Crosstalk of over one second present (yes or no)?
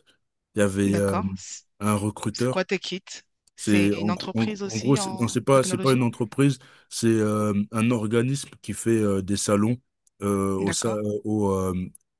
yes